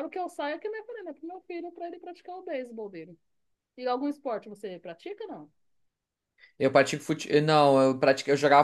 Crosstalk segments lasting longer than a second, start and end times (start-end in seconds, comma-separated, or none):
none